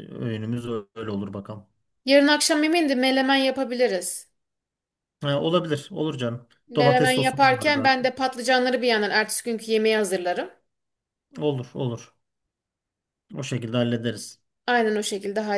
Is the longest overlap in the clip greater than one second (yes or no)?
yes